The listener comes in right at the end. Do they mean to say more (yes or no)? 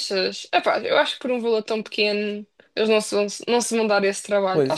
yes